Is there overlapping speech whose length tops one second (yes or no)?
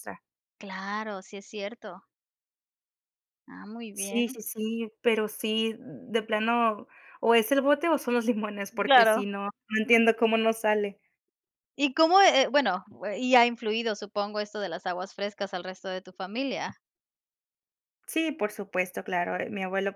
no